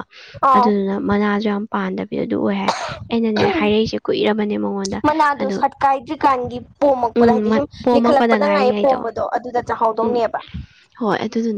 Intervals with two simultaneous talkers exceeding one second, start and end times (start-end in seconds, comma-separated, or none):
7.1-9.1